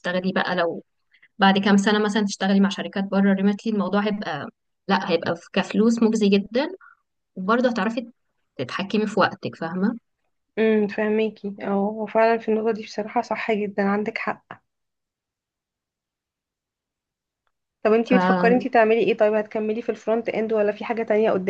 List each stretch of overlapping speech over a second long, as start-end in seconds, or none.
none